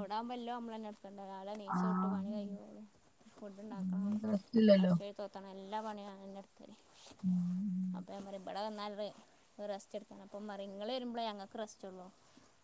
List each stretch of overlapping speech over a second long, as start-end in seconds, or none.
none